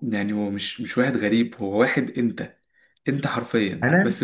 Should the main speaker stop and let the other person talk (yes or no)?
no